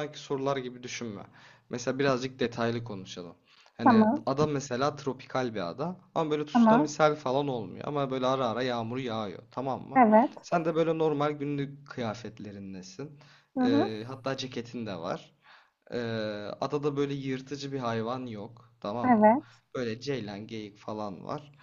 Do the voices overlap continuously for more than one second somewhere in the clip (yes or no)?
no